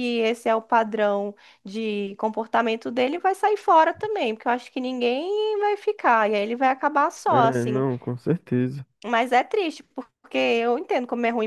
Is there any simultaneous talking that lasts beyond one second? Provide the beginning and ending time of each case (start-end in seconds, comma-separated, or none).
none